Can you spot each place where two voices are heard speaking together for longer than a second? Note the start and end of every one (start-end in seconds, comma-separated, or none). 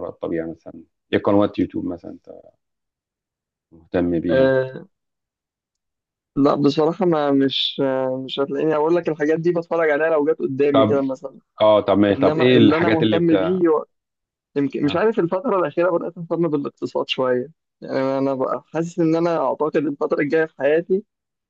12.1-13.3